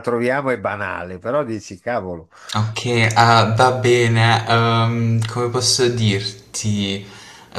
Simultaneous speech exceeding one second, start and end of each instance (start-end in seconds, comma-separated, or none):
none